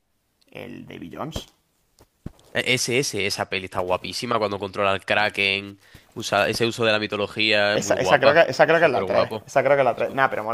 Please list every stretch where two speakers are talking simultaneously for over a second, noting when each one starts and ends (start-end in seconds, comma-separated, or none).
7.7-9.5